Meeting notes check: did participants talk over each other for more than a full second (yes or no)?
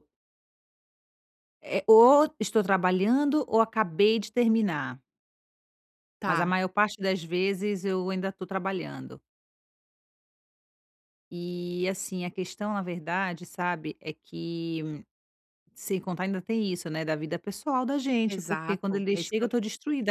yes